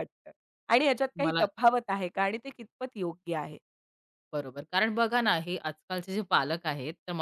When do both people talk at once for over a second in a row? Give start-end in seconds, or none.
none